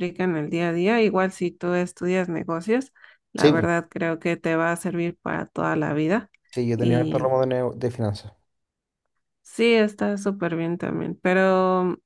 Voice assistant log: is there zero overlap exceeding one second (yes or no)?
yes